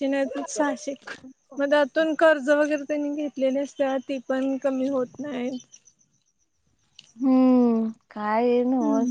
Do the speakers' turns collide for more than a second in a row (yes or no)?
no